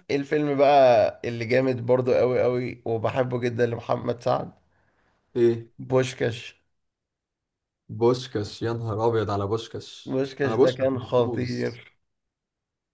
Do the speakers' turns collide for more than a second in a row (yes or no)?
yes